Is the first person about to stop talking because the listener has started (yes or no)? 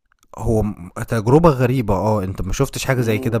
yes